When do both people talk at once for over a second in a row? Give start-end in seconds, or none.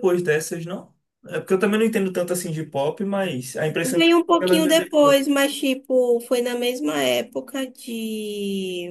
3.8-5.2